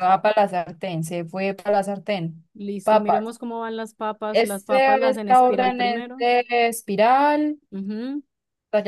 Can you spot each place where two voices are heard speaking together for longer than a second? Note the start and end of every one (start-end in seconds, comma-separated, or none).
4.3-6.3